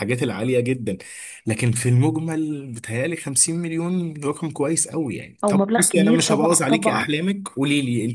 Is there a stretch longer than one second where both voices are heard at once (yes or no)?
yes